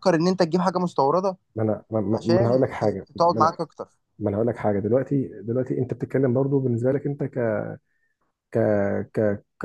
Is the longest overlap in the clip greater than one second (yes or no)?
yes